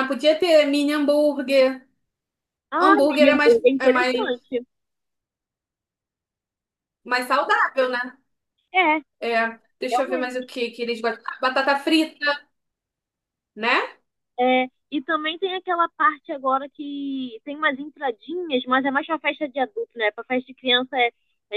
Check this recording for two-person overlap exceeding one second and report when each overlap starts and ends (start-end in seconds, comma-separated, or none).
2.8-4.5